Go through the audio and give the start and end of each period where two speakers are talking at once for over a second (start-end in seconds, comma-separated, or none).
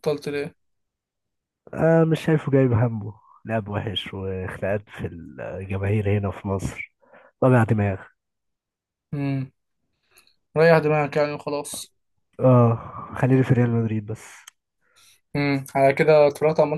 none